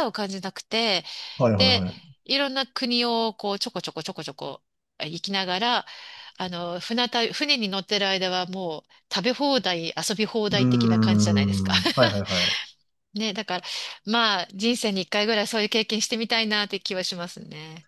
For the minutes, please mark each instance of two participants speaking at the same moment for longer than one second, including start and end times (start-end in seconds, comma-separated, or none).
10.5-11.7